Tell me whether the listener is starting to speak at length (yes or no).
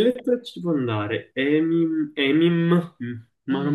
yes